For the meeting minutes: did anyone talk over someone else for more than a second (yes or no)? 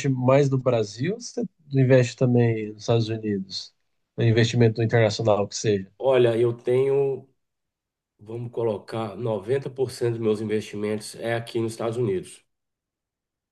no